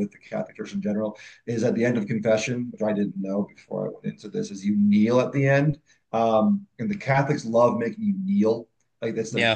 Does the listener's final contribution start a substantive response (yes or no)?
no